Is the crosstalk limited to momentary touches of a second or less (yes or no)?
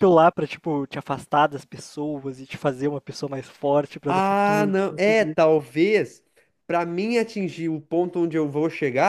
no